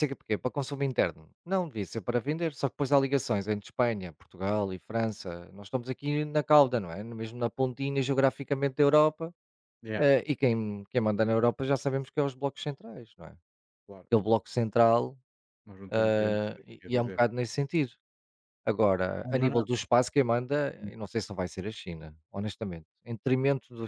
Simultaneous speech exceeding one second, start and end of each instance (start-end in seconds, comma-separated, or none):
15.9-17.2